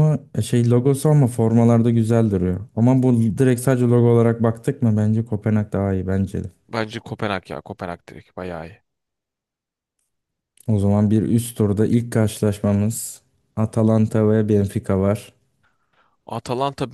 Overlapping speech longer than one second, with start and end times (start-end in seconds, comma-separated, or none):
none